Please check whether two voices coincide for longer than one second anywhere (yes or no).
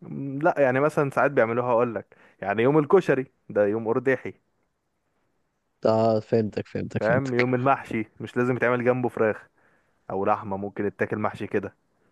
no